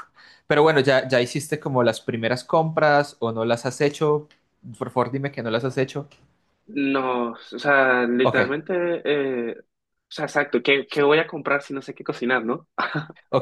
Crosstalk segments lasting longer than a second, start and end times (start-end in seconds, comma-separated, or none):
none